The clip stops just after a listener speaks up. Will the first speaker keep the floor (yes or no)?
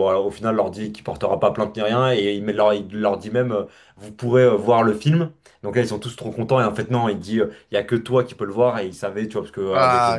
yes